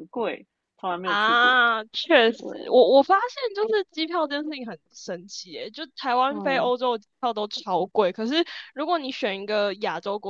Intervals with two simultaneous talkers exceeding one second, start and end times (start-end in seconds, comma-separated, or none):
none